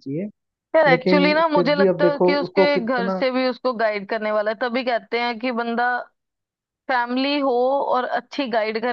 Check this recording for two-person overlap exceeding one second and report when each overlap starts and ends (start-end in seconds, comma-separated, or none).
0.9-3.2